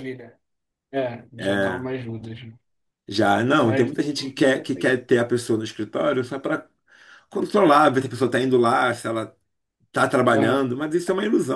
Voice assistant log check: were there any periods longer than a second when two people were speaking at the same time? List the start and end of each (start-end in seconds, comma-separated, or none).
3.6-5.0